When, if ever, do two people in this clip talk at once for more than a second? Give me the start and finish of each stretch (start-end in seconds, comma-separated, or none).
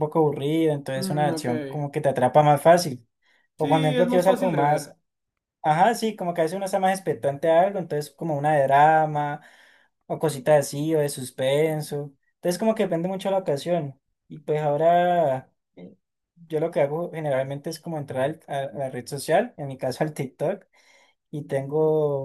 3.6-4.9